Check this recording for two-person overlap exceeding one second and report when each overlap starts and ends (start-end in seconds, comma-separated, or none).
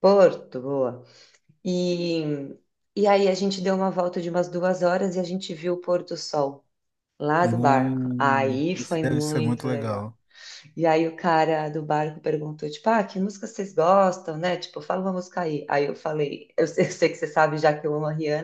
7.4-10.1